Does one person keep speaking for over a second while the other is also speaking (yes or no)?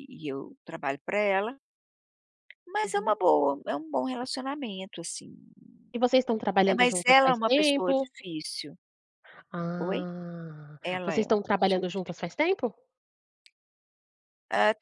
yes